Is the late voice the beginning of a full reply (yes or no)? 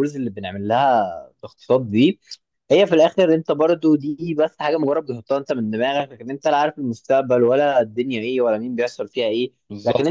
no